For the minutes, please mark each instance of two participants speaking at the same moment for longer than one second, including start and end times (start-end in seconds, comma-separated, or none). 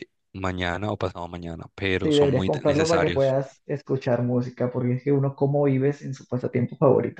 2.0-3.4